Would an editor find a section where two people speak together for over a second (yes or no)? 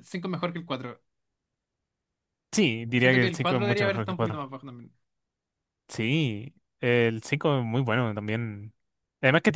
yes